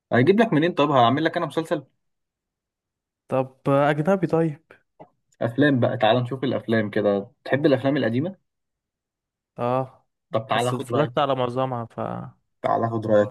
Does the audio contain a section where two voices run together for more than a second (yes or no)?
no